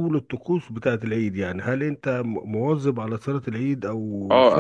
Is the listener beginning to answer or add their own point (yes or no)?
yes